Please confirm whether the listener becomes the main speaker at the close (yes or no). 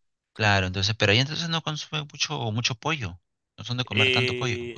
yes